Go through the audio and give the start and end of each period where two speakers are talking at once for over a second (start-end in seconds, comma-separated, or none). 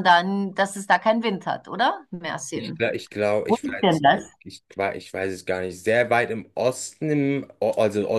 none